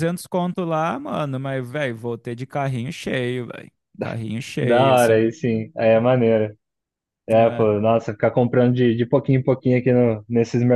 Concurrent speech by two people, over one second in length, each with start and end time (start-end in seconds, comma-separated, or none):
none